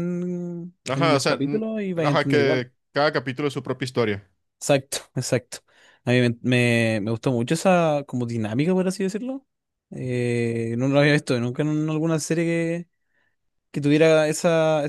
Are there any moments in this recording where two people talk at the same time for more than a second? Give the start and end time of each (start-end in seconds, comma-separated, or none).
0.9-2.7